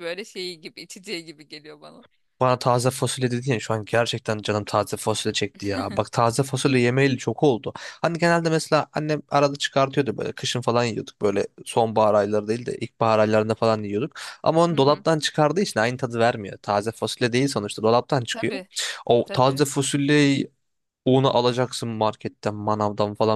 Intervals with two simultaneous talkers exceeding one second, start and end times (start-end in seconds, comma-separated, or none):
none